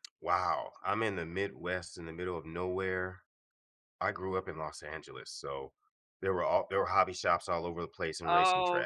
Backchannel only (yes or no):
no